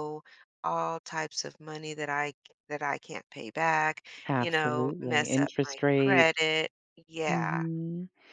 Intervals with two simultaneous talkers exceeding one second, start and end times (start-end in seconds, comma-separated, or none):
4.3-6.3